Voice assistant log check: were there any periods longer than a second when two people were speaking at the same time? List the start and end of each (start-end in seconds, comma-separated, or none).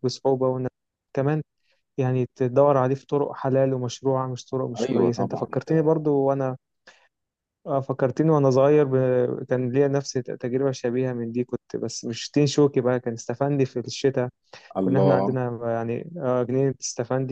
4.8-6.0